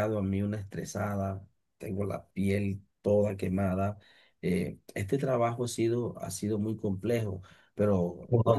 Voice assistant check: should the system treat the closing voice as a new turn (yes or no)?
yes